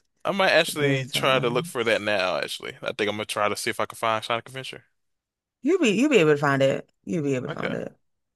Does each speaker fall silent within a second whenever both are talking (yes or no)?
no